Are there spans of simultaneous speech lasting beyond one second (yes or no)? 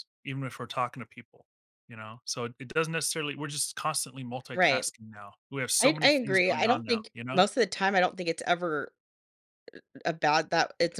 yes